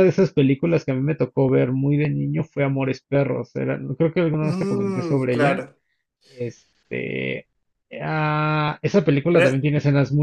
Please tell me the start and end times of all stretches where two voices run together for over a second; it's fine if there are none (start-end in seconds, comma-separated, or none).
4.4-5.6